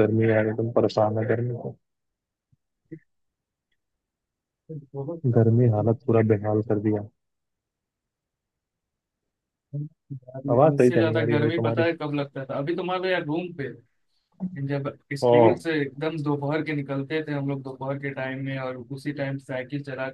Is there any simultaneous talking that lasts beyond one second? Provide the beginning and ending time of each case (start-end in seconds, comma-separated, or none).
10.5-11.8